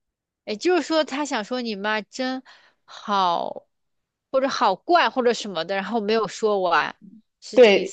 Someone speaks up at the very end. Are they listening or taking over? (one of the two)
taking over